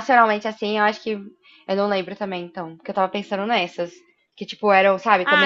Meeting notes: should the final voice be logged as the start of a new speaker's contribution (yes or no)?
yes